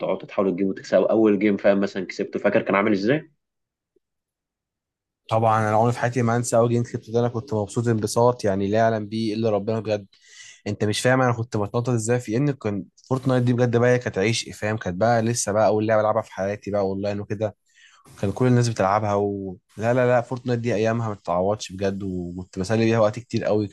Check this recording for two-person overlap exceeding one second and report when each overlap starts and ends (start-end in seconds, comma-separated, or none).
none